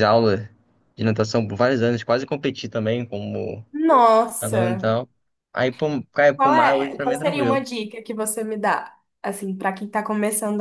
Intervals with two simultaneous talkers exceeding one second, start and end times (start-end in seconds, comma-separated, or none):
6.3-7.6